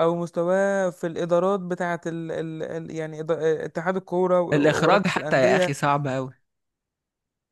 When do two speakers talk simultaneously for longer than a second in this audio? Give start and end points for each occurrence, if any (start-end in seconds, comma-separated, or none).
4.5-5.7